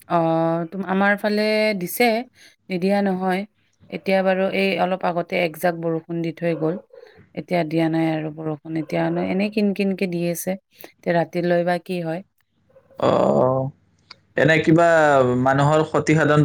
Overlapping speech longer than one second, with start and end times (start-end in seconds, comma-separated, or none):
none